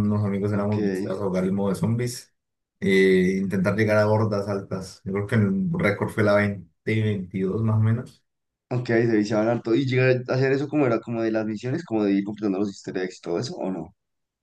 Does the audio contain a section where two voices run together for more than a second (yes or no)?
no